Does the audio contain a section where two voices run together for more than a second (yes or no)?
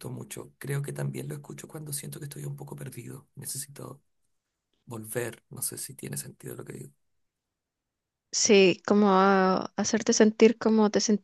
no